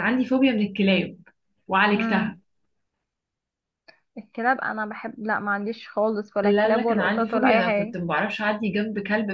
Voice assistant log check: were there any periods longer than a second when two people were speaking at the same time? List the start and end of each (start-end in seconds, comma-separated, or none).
6.4-8.0